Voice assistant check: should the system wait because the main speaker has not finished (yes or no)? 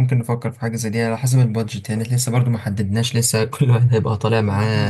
no